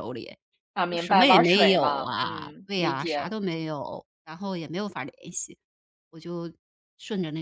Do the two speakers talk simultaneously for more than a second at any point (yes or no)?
yes